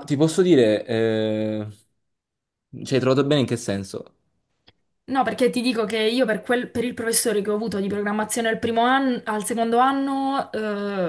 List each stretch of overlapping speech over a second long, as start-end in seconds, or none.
none